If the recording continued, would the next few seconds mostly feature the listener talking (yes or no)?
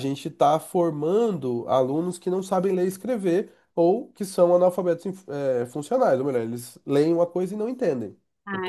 yes